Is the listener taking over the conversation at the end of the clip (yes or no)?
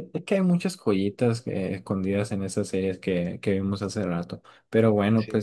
no